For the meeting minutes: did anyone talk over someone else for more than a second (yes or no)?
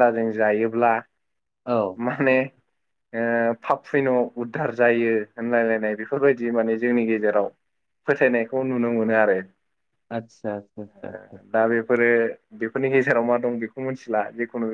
no